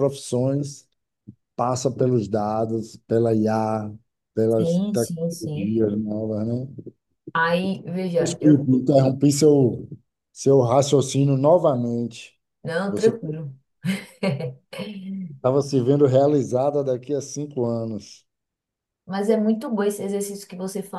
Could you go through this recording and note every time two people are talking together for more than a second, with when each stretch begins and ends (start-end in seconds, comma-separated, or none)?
4.5-5.8